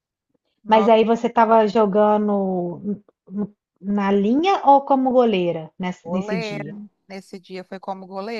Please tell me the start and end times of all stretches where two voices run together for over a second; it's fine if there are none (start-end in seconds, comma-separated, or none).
none